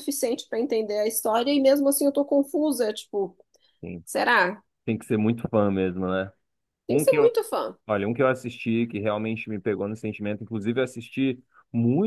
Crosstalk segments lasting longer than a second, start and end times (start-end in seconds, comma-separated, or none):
none